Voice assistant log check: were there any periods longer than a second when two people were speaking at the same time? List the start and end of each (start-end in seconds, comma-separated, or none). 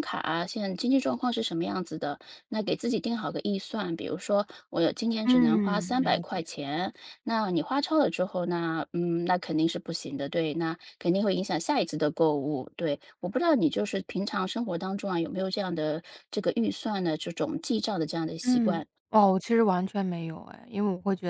5.2-6.5